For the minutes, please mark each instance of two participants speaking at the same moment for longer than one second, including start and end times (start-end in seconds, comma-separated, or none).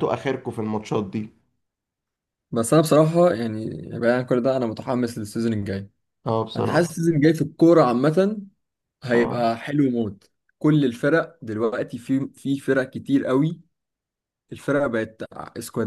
none